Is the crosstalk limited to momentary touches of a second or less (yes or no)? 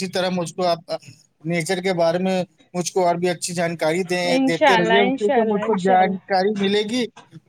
no